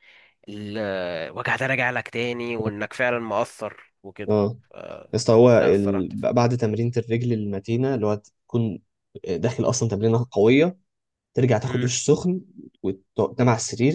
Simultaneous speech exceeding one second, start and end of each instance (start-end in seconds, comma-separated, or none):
none